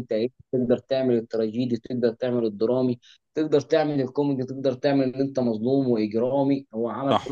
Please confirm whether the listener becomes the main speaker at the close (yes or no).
no